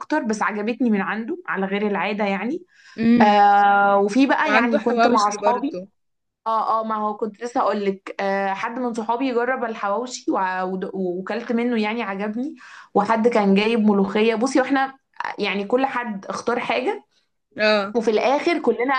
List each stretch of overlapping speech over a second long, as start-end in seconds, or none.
4.5-5.8